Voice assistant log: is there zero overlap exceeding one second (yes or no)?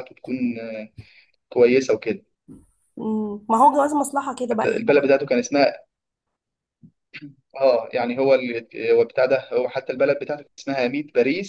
yes